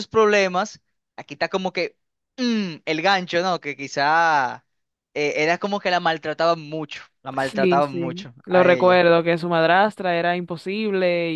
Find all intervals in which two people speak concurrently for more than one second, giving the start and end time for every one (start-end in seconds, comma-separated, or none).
7.4-9.1